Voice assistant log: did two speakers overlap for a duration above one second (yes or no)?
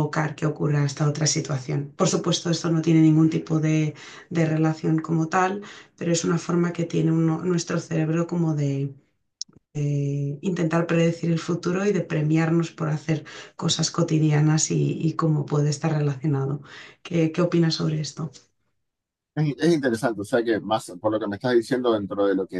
no